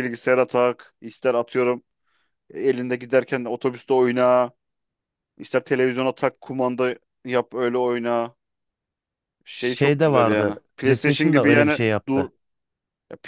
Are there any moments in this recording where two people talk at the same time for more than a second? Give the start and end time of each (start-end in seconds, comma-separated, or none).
9.6-12.3